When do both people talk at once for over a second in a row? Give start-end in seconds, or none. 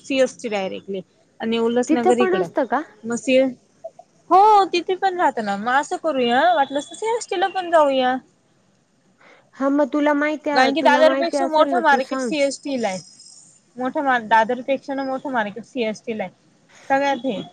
10.8-12.3